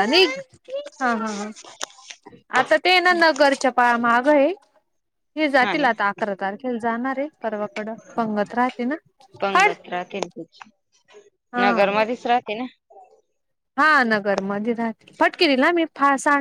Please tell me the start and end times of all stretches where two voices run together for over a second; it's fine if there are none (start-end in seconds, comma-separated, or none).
none